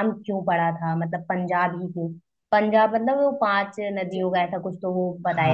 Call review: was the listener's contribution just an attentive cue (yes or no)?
no